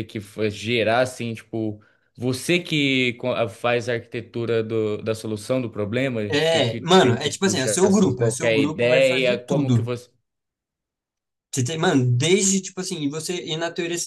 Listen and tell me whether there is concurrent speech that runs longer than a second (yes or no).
yes